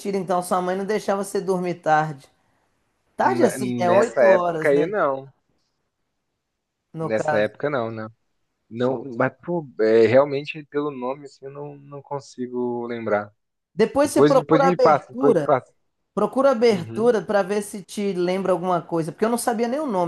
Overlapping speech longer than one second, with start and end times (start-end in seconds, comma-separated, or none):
3.2-4.9, 14.0-15.5